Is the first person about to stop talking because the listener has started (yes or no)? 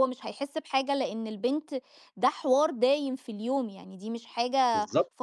yes